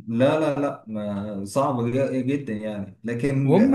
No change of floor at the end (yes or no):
yes